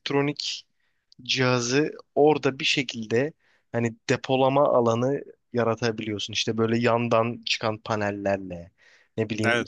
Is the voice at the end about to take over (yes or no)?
no